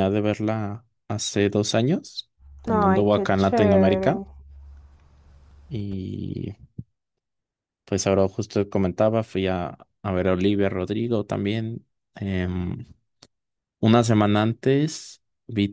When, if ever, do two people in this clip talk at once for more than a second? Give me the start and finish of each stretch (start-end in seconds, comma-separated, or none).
2.7-4.2